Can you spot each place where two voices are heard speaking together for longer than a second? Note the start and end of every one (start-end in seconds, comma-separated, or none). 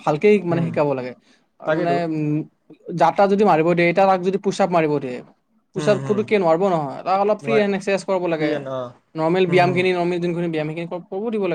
none